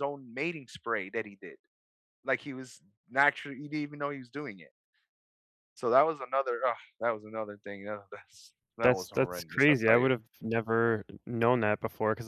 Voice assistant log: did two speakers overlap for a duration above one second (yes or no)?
yes